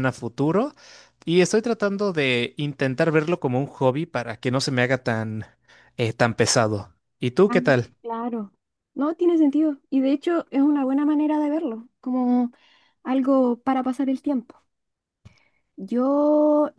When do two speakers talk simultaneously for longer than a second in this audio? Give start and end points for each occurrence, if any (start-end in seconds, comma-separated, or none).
none